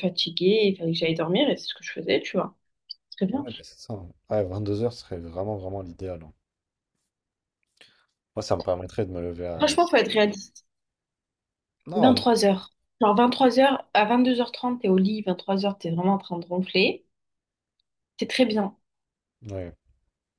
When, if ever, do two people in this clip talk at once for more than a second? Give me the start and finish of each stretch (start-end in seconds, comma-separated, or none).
none